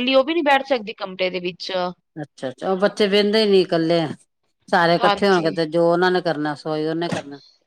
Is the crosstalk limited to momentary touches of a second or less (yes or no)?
yes